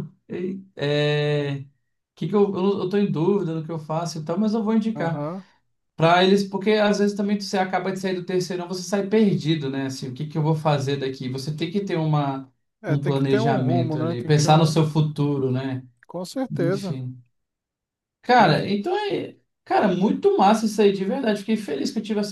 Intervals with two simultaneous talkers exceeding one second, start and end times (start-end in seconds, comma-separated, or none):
12.9-14.8